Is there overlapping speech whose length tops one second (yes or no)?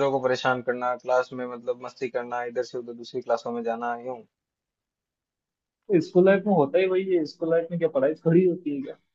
no